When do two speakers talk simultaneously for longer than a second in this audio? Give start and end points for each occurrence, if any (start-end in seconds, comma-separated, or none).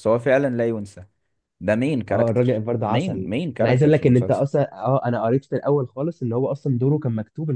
2.1-4.4